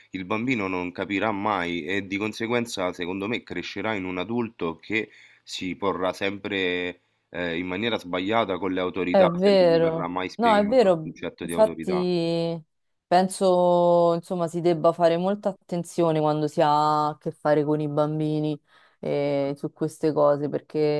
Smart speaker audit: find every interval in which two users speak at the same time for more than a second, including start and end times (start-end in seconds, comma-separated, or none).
9.1-12.1